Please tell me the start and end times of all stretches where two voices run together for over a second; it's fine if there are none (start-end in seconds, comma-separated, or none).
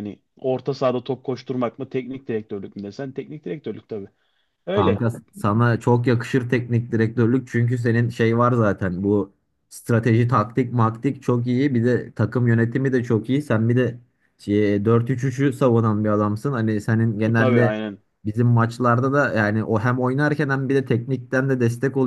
none